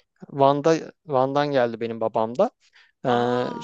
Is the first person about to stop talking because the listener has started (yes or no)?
no